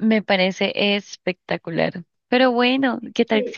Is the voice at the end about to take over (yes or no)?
no